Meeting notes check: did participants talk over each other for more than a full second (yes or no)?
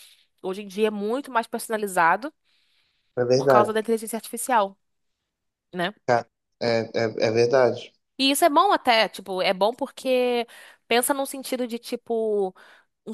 no